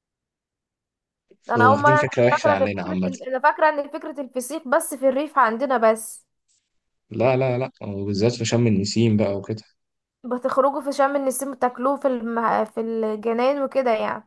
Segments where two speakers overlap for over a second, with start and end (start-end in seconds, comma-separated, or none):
1.6-3.1